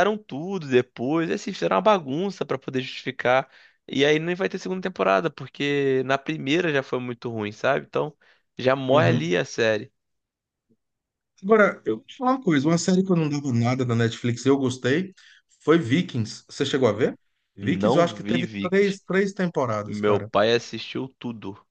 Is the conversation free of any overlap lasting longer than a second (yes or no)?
no